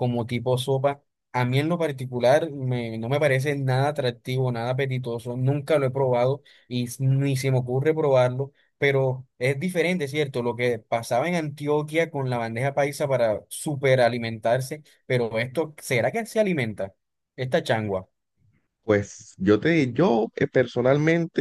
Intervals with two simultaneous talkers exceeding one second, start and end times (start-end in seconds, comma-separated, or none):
none